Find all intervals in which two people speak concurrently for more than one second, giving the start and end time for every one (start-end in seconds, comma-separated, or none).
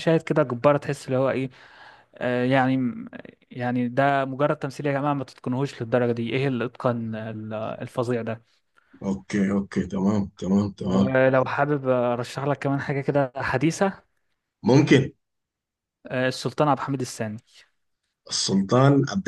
none